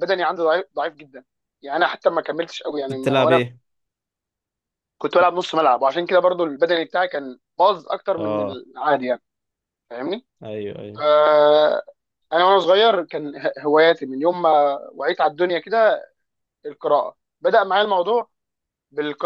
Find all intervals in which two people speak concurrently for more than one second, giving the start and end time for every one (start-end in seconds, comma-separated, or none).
none